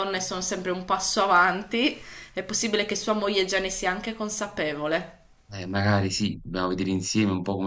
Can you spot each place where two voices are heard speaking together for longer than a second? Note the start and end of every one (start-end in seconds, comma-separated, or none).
none